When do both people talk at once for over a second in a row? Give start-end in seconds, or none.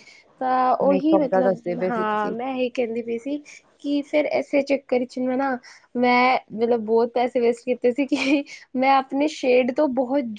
0.8-2.3